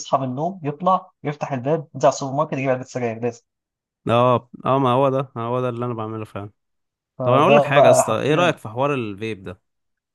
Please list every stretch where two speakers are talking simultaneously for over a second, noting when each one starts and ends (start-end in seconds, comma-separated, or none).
7.2-8.6